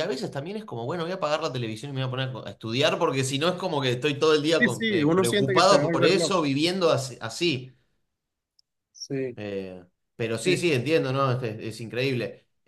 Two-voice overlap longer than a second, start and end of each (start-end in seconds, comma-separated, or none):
4.6-6.4